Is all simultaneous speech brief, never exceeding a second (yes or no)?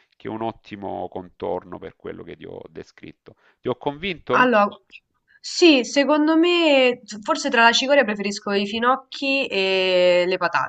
yes